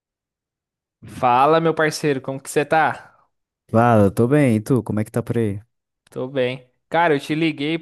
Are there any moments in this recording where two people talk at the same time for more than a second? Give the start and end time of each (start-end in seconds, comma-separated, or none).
none